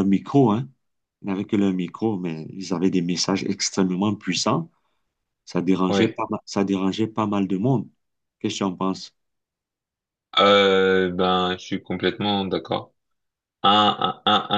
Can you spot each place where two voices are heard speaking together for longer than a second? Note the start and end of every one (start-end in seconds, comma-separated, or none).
none